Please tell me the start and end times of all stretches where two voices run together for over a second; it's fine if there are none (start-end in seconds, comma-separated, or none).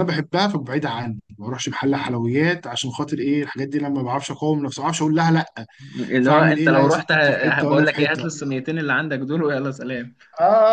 6.2-8.2